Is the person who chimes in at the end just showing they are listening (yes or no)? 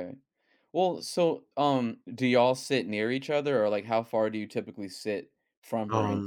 no